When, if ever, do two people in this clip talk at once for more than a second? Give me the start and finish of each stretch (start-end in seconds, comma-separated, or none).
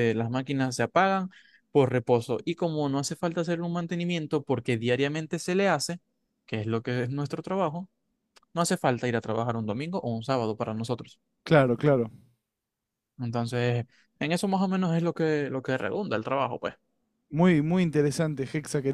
none